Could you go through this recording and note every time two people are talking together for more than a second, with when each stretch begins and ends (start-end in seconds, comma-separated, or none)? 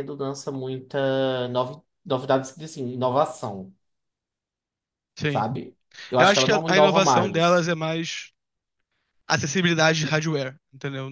6.2-7.7